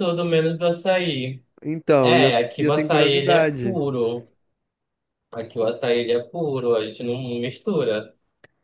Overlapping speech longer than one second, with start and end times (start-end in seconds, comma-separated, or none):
2.0-3.8